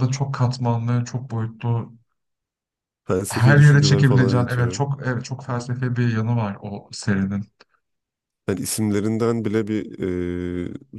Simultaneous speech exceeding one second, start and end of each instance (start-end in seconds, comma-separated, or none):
3.3-4.8